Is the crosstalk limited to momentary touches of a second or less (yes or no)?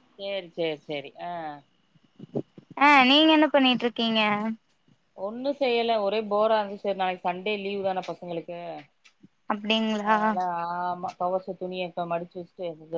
yes